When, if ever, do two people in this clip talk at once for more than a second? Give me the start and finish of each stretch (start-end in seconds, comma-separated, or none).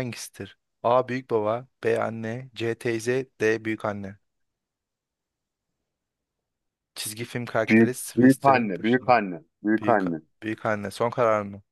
7.7-9.2